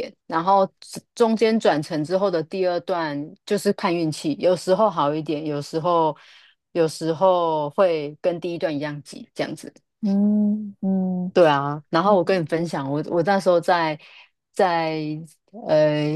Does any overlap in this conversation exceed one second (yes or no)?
no